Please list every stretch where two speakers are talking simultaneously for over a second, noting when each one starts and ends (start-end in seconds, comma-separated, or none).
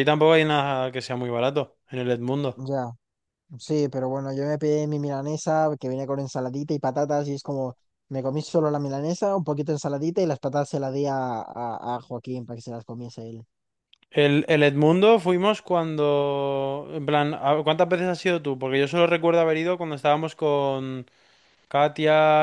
none